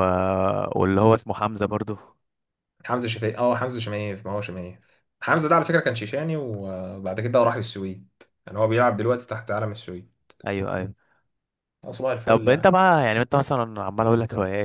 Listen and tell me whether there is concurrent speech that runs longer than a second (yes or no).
no